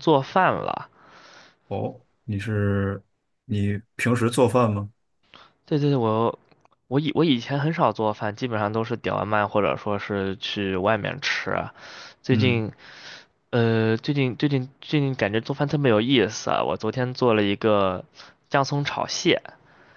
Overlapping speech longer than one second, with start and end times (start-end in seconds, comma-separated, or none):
none